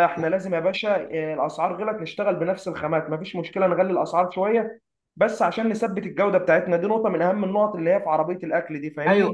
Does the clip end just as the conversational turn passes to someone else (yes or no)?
yes